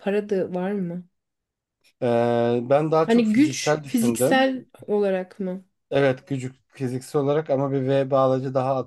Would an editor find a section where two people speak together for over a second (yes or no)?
yes